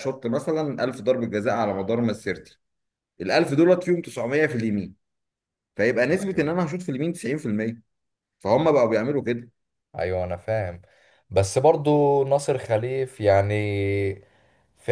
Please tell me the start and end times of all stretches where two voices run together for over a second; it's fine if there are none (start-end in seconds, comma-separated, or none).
none